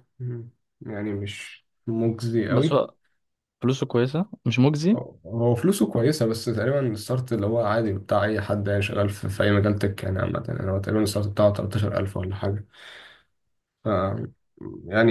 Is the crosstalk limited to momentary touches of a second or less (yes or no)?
yes